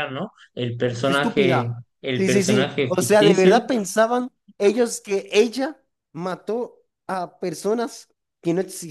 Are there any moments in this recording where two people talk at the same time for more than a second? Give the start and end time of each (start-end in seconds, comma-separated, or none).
1.0-3.6